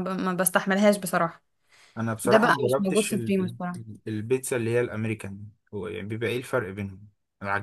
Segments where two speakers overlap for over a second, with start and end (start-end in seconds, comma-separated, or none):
2.2-3.8